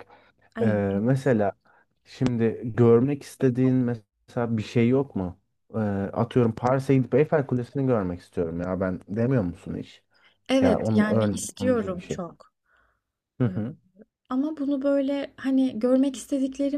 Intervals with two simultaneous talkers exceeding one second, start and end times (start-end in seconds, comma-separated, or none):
10.6-12.2